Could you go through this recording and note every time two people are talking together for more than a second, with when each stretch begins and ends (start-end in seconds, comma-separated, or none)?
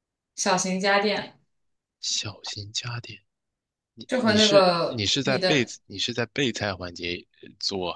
4.2-5.7